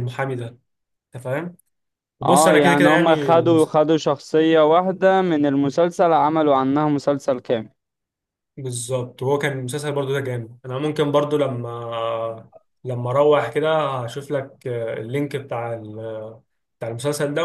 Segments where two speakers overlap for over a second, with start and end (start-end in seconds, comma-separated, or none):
2.2-3.7